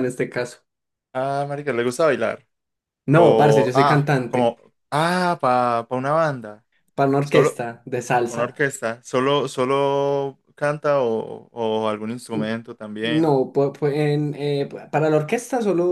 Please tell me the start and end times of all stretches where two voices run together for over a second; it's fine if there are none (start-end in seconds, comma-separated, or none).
3.1-4.6